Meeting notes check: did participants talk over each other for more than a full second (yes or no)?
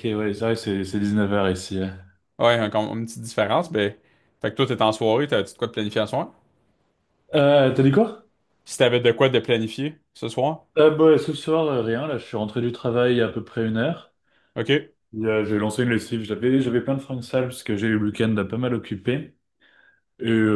no